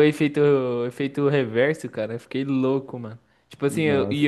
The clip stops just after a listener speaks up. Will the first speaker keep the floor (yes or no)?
yes